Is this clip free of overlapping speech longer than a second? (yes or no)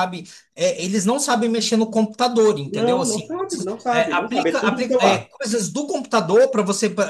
no